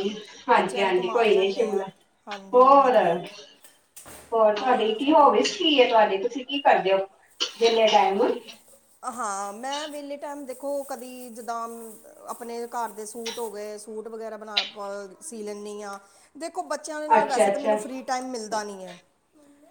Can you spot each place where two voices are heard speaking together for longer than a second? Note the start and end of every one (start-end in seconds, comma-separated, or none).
0.6-1.8